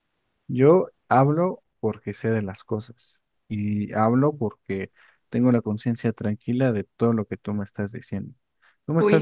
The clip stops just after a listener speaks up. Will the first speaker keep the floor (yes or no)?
no